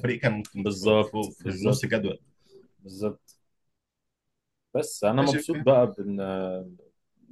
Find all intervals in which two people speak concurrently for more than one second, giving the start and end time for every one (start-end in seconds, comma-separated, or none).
0.6-2.0